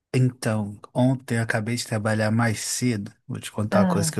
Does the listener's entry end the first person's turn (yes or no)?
no